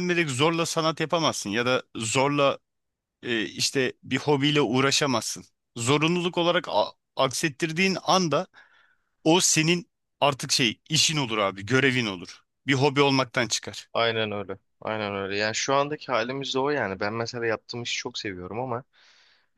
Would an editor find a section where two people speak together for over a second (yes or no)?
no